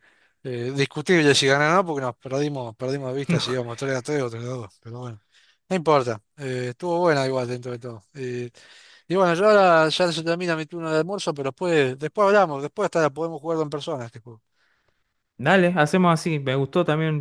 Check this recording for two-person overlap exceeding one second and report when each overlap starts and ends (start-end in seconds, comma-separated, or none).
none